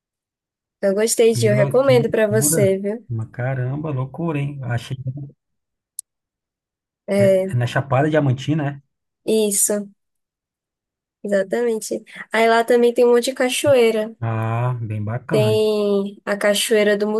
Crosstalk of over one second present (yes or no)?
yes